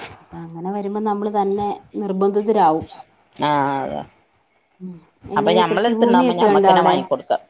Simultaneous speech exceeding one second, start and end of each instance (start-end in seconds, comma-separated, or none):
5.4-7.0